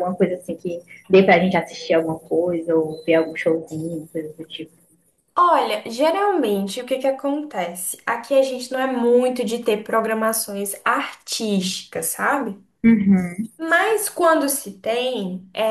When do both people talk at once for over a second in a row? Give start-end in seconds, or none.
none